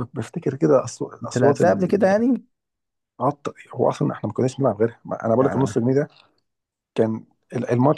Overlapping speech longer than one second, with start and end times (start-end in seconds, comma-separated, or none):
none